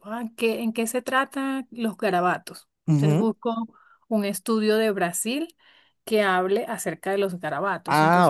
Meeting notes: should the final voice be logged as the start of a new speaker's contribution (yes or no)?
yes